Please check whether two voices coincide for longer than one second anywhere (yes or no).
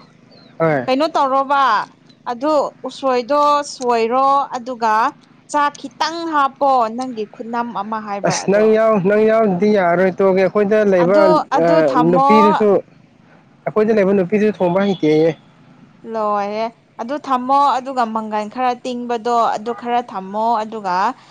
no